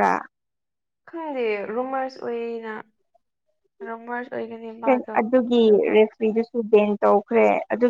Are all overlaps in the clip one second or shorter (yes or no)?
yes